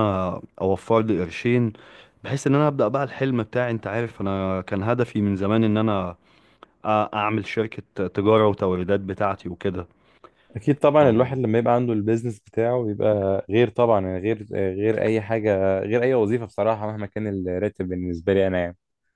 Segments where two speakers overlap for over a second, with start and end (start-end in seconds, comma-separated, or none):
none